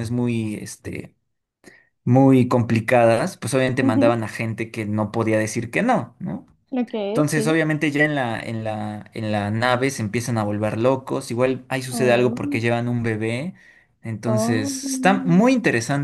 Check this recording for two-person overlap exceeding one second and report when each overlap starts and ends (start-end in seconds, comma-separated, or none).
14.3-15.5